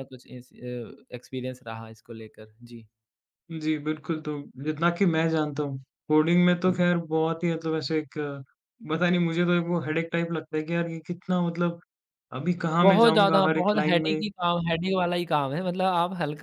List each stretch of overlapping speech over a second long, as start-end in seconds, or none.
12.8-14.2